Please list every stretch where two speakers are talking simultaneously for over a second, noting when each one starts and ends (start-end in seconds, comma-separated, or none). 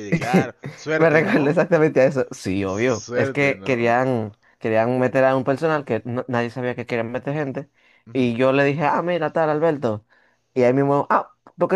2.6-3.9